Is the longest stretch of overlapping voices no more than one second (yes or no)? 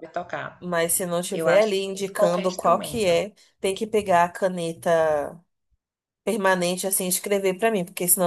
no